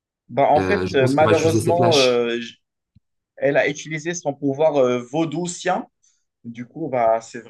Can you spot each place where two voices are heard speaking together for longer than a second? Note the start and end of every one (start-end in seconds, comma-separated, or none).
0.6-2.2